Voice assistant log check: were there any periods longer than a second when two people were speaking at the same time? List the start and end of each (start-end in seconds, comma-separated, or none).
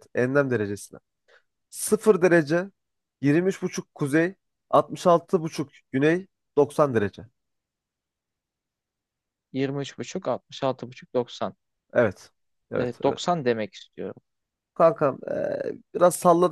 none